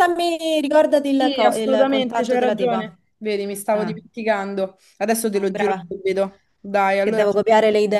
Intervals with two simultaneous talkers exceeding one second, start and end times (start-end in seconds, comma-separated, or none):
1.2-3.0